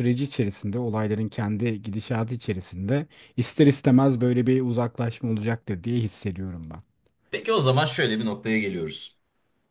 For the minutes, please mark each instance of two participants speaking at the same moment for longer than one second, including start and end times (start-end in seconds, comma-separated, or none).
none